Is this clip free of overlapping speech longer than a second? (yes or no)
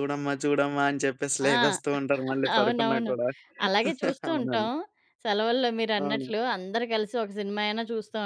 yes